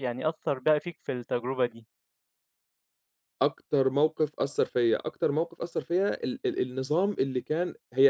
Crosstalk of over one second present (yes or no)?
no